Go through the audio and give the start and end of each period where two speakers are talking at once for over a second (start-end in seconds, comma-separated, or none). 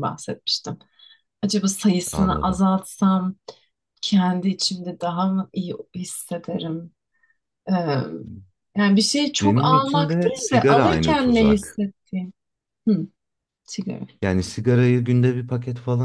9.4-11.8